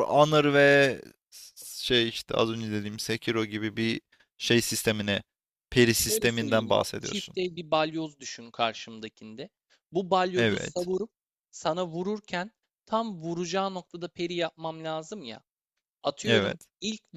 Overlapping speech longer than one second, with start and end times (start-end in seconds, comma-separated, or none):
6.0-7.4